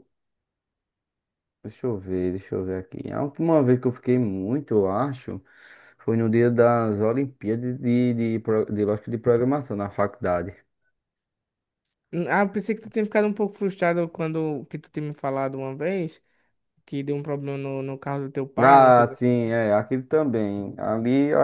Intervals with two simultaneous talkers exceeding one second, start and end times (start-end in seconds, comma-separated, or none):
none